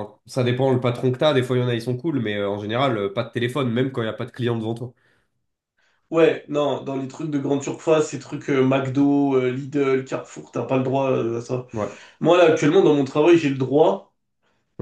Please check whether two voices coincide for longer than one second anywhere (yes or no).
no